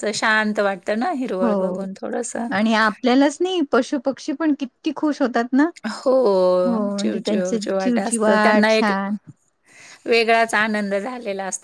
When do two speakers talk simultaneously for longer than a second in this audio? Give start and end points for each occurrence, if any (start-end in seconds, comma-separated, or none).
7.0-8.9